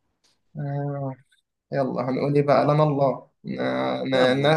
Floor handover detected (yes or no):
no